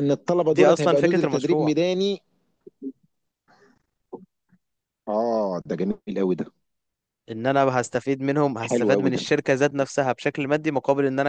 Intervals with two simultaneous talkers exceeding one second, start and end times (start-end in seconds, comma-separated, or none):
0.5-1.7